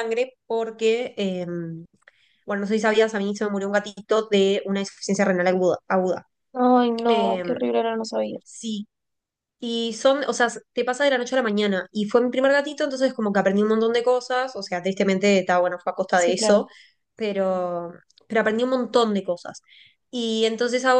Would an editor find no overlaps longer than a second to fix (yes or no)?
yes